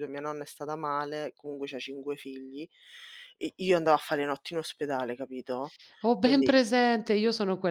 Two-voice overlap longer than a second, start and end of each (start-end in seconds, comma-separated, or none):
none